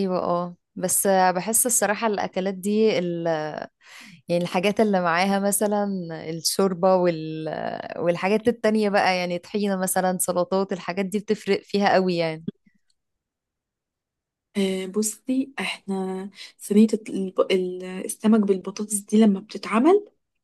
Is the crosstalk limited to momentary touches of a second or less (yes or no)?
yes